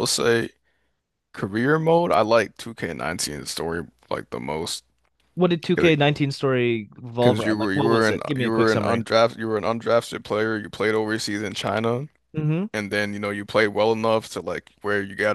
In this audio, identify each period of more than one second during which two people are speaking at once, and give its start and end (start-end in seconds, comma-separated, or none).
7.2-9.0